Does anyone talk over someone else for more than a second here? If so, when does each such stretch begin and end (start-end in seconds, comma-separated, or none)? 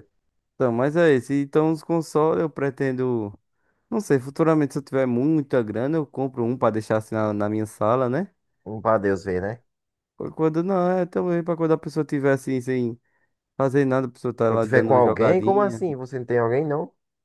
14.5-15.8